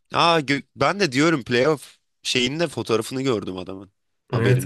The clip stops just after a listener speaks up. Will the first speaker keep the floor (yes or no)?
no